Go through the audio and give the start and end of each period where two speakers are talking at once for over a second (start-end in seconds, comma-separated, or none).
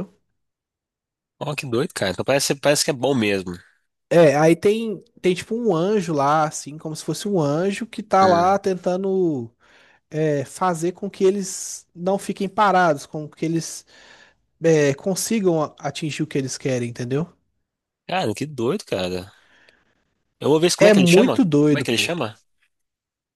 20.8-22.1